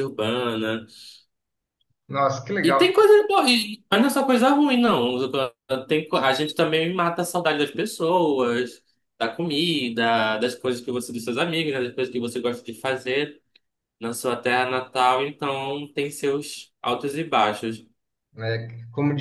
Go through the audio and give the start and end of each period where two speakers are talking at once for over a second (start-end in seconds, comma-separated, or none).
none